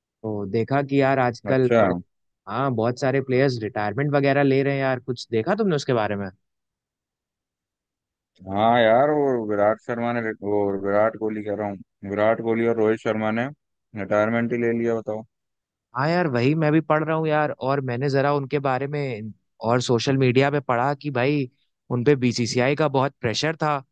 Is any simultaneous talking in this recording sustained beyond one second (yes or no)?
no